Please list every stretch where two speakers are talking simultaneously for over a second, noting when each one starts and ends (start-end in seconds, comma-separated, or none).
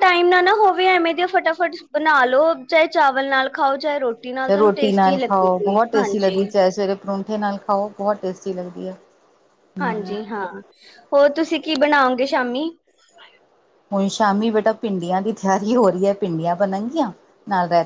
4.4-6.4